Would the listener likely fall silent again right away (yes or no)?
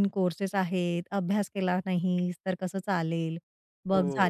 no